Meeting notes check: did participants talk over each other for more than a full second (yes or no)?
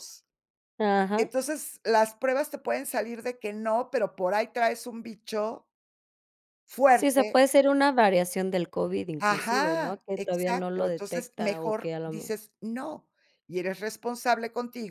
yes